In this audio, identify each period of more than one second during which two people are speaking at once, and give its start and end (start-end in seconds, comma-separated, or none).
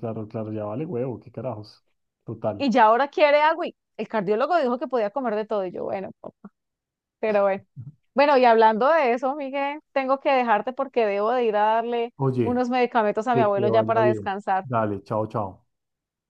13.3-14.7